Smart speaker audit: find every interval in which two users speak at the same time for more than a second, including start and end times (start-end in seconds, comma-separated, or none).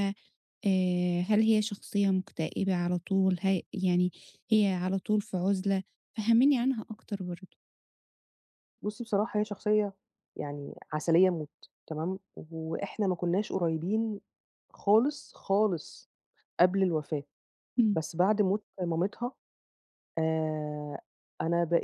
none